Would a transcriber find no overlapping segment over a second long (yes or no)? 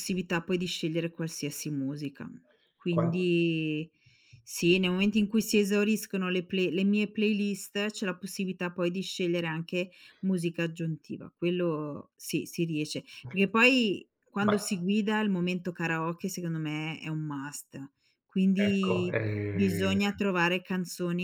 no